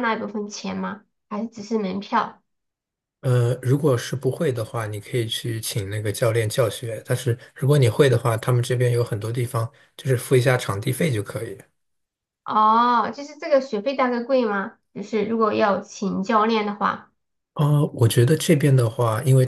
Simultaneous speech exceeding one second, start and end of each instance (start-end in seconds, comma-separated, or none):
none